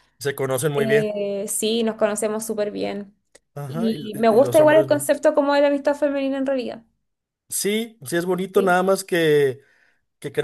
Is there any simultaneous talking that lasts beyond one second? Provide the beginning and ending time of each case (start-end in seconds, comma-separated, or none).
3.7-5.1